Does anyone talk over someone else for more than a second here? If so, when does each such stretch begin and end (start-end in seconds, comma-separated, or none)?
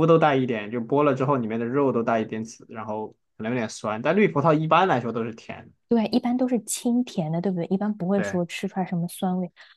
none